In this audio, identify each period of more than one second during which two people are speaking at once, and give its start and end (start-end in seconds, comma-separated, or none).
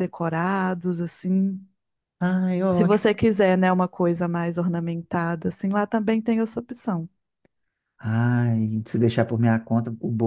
none